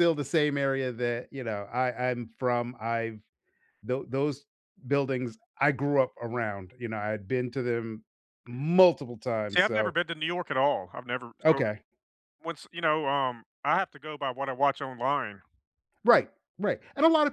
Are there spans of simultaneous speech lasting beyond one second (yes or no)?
no